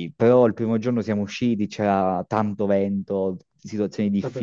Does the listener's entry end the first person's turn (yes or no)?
no